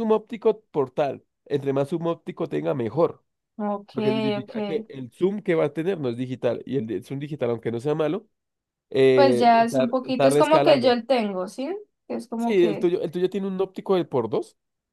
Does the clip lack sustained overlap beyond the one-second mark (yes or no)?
no